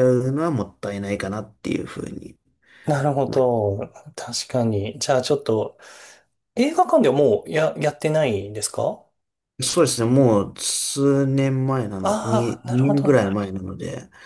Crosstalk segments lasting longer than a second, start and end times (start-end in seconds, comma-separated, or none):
12.0-13.5